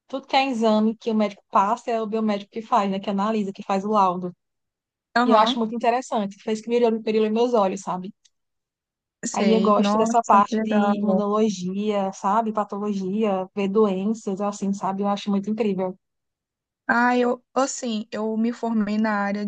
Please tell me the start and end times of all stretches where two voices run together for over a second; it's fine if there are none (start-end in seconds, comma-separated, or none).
9.3-11.2